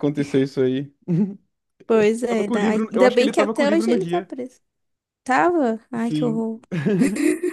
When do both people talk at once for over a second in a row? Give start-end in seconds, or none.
2.3-4.3